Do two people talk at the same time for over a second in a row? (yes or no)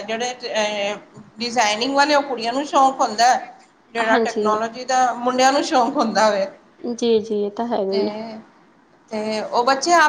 no